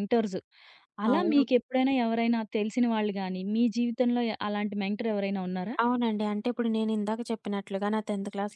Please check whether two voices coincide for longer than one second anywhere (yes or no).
no